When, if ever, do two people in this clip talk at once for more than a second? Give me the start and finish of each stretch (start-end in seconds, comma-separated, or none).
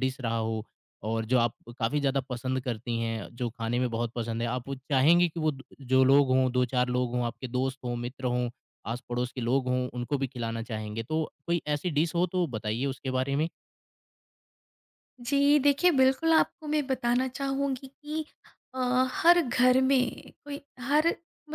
none